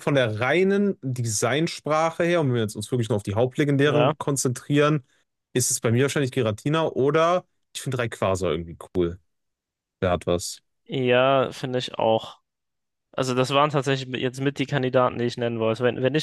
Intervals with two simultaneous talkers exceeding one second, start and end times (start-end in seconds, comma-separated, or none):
none